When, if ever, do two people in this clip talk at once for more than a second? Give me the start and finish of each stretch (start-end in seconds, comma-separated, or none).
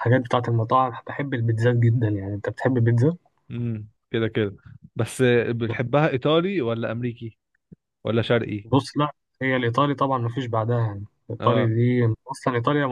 none